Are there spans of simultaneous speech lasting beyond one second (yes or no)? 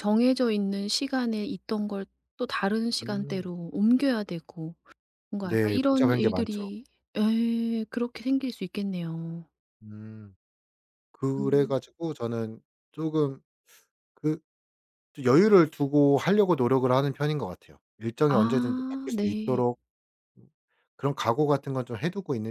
yes